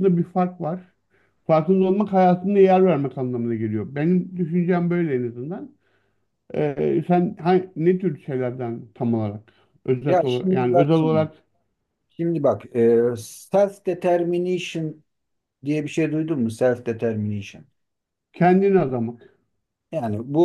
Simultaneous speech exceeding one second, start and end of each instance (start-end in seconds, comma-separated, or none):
10.0-11.2